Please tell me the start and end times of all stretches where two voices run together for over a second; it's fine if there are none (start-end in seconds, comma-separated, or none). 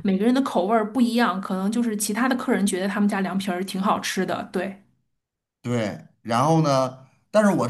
none